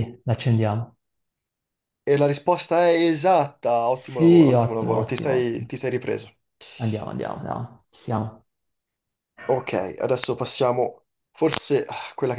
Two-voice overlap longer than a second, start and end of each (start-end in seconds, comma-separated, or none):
3.9-5.7